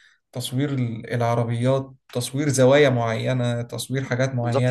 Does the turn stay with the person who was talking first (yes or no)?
no